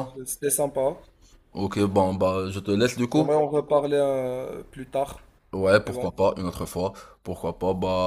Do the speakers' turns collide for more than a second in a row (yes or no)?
no